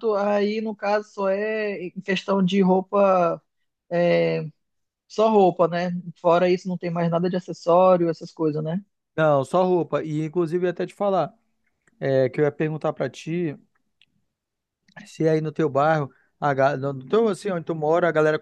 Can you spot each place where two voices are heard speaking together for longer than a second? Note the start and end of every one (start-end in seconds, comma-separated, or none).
none